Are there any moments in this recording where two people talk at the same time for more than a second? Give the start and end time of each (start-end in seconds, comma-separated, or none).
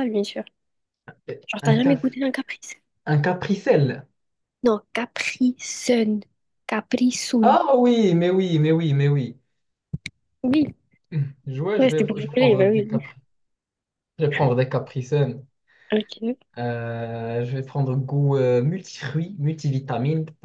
11.8-13.0